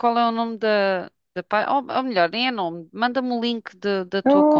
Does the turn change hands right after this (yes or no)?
yes